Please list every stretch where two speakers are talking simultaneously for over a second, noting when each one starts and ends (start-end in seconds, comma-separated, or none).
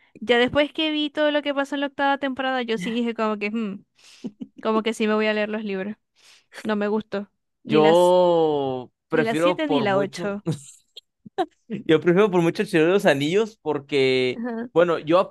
9.1-10.4